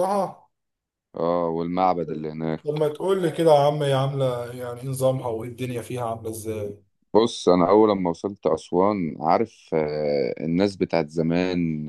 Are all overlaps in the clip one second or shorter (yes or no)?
yes